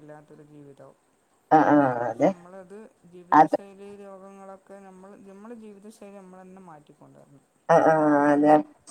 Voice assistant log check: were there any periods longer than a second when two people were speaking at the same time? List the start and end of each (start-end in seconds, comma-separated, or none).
none